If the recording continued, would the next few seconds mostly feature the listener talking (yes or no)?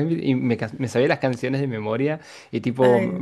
no